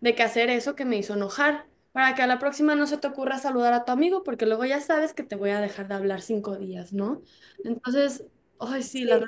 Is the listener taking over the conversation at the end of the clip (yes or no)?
yes